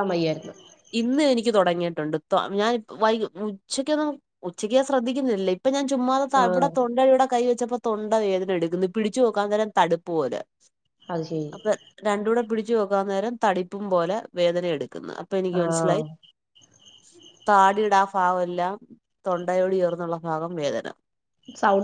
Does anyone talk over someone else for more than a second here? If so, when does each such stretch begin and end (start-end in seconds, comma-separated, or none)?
none